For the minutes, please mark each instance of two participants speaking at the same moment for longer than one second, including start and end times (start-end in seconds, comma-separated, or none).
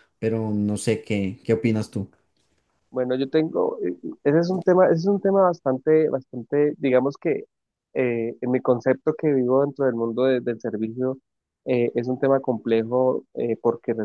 none